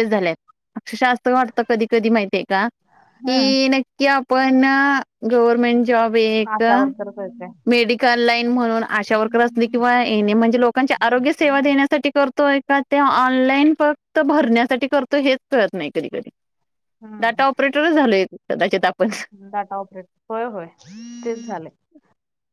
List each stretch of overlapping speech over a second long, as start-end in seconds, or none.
none